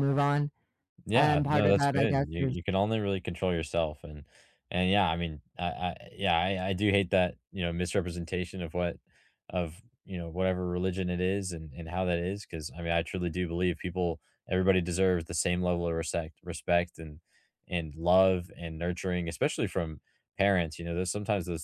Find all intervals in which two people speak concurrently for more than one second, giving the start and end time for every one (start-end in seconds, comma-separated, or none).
1.1-2.5